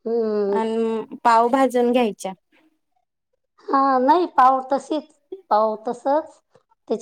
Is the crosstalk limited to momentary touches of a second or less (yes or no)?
yes